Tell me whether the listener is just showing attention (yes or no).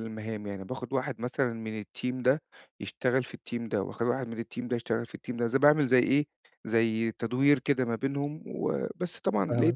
yes